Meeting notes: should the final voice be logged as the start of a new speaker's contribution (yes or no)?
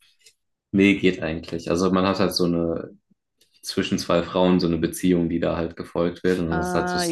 yes